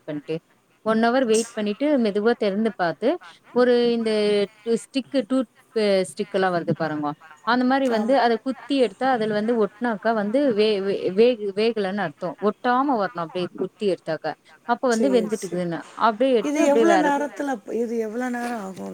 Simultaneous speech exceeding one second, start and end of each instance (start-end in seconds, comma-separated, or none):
none